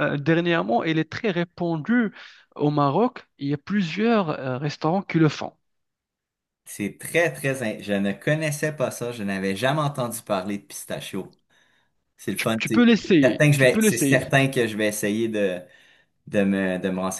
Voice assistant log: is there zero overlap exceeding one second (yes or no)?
no